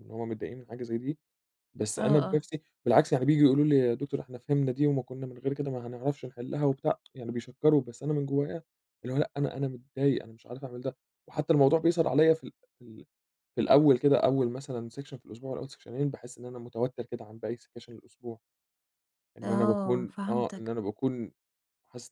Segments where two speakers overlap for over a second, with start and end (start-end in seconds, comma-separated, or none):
19.4-20.7